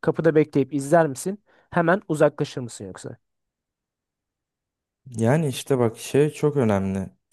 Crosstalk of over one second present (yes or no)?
no